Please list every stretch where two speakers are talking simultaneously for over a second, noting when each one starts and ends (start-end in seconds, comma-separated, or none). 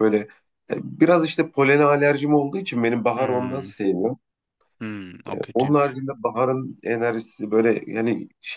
none